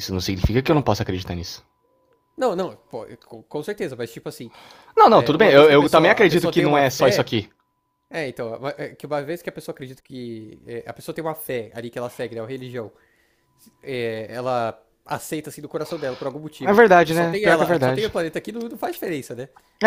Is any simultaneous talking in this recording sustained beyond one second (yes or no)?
yes